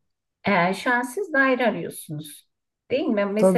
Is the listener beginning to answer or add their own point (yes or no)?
yes